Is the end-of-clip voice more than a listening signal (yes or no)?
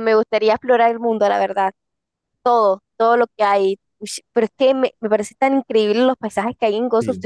no